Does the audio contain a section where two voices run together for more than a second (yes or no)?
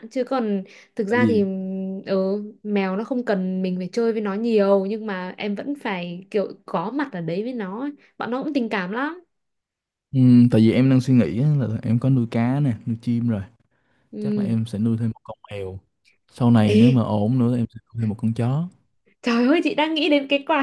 no